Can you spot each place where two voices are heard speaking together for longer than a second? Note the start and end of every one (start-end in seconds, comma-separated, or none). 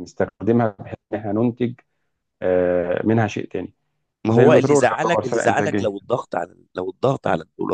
4.3-5.9